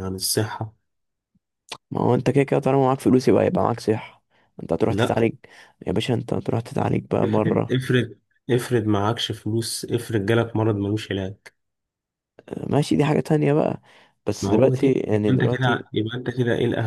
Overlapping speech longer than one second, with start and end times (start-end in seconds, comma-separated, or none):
14.4-15.9